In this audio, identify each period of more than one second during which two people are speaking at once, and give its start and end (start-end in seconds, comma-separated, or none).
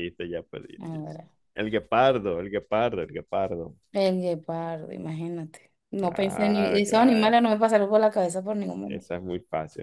6.0-7.3